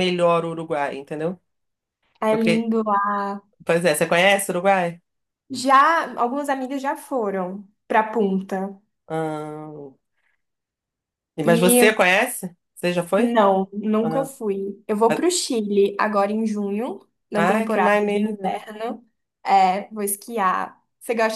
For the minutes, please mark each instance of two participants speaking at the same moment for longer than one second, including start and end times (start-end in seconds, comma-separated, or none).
17.3-18.6